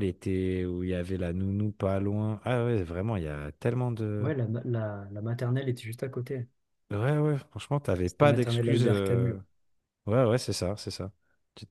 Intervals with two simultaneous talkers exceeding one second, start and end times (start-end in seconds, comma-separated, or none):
8.1-9.4